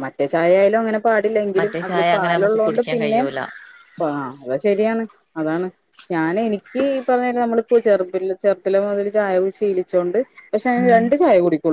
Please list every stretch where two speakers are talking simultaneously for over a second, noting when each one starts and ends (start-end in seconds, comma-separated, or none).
1.6-3.2